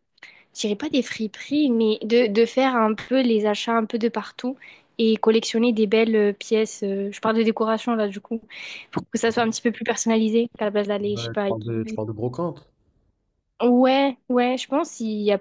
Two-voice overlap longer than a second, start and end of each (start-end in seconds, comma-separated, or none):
none